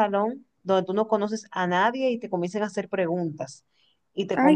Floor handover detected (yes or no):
yes